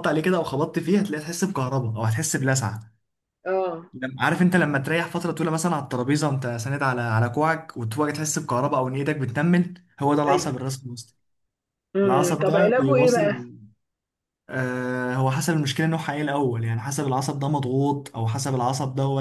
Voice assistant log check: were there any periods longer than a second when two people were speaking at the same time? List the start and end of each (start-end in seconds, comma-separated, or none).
12.0-13.3